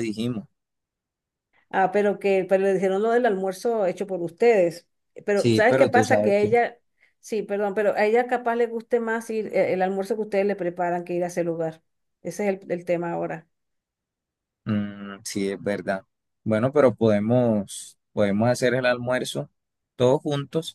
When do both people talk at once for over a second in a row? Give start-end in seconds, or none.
5.3-6.5